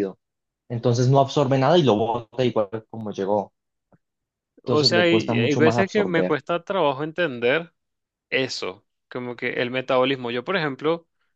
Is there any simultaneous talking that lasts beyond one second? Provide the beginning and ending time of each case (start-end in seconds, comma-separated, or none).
4.6-6.4